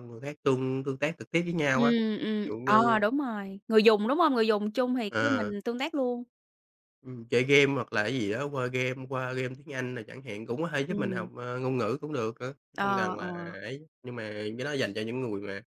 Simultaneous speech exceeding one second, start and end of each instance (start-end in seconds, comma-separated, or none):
1.7-3.0